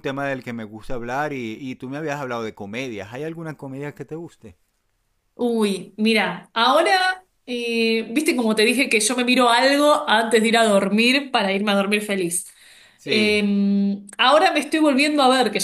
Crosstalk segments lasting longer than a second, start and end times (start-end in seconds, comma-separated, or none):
none